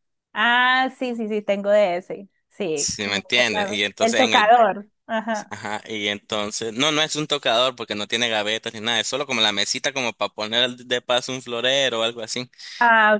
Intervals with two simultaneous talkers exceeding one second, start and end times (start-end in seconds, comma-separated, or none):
2.7-4.5